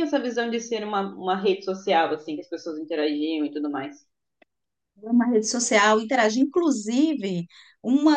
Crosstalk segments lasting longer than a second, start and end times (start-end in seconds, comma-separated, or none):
none